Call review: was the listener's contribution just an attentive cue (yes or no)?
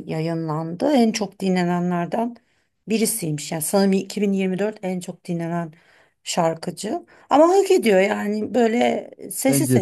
yes